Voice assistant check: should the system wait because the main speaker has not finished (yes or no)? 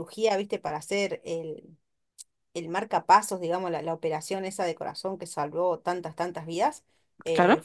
yes